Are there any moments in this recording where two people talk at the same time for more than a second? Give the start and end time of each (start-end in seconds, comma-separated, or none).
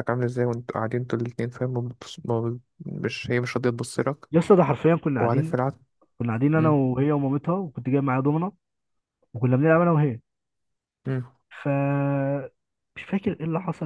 none